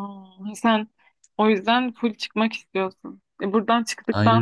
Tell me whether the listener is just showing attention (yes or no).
yes